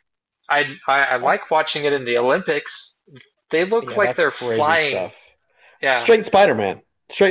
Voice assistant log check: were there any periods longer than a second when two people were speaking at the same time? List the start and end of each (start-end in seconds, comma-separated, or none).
3.8-5.1